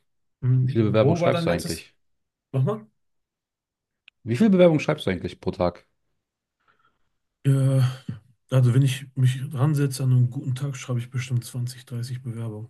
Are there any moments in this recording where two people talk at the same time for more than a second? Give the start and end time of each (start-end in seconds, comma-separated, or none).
0.6-1.9